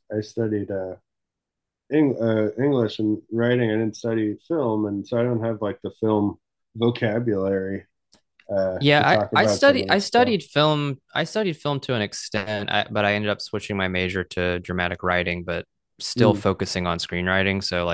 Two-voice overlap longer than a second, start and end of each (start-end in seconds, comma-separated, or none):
8.8-10.4